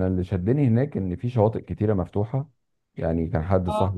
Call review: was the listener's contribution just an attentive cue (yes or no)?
yes